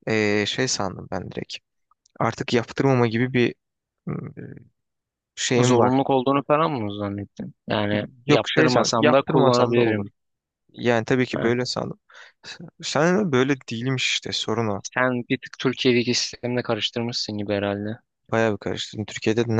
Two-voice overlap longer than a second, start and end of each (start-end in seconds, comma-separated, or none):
8.3-10.1